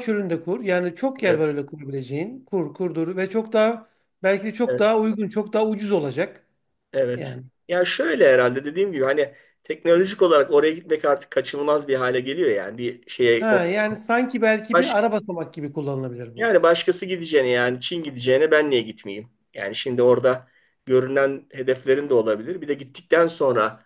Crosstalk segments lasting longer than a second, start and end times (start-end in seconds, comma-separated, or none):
none